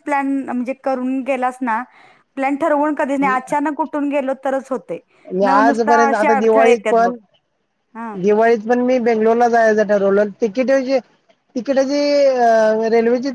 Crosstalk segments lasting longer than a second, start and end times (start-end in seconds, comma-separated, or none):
5.4-7.1